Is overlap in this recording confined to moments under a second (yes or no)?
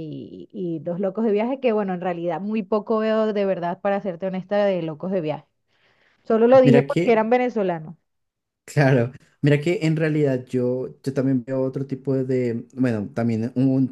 yes